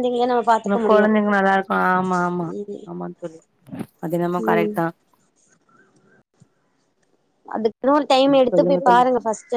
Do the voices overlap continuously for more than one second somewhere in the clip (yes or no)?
no